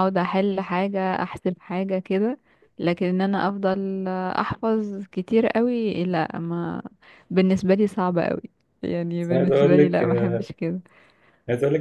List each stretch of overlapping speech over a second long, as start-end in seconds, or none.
9.2-10.5